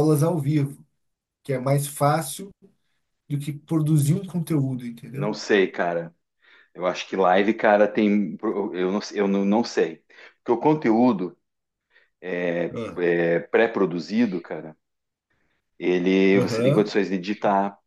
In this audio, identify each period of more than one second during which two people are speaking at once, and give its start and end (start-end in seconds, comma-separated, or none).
none